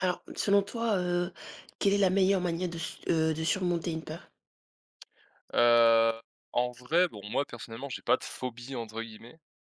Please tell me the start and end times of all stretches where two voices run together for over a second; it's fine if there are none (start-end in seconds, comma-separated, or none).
none